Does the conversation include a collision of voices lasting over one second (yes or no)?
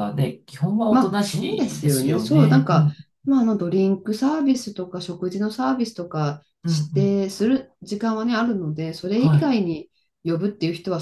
yes